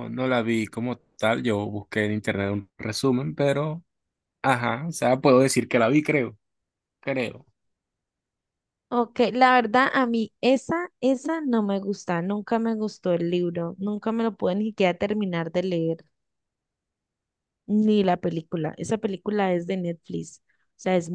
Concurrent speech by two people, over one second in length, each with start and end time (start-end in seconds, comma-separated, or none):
none